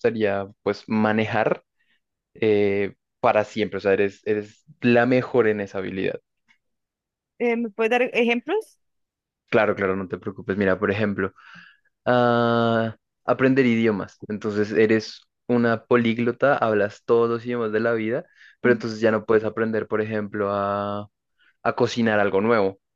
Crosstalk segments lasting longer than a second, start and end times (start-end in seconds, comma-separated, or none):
none